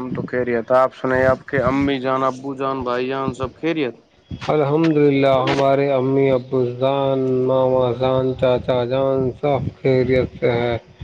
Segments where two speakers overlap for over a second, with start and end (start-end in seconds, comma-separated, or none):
none